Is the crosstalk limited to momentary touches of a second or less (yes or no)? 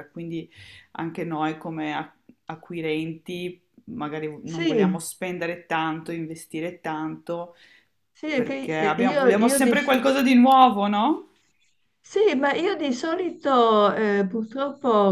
no